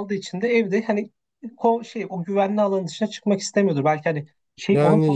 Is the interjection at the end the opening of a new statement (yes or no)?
yes